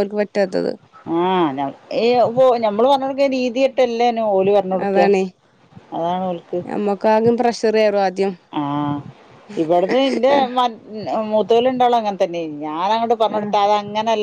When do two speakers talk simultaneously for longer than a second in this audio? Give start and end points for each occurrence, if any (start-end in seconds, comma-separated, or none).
none